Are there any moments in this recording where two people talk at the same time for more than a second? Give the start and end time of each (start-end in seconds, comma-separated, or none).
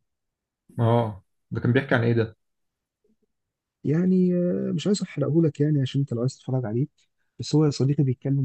none